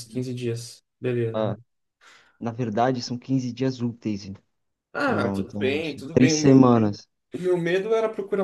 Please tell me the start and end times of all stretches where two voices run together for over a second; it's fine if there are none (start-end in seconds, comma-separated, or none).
5.1-6.6